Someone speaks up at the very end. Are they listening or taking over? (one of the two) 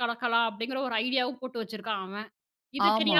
listening